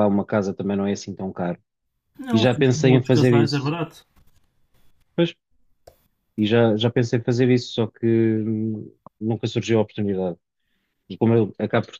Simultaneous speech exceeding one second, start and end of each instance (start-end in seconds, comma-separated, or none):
2.3-3.7